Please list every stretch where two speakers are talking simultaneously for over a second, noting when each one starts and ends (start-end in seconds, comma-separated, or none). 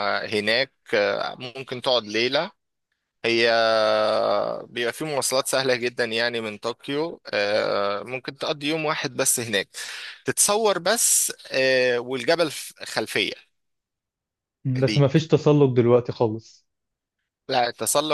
none